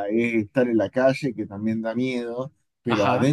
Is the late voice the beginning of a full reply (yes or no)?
no